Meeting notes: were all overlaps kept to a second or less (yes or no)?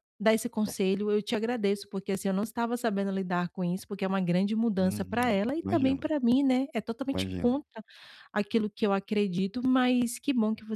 no